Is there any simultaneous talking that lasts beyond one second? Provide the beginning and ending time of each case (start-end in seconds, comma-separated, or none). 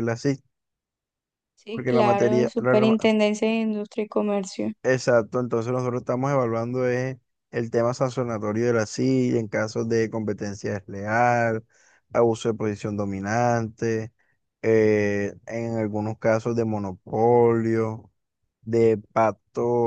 1.7-3.0